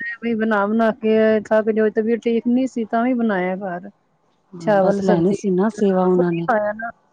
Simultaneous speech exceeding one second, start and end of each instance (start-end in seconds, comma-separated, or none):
4.6-6.5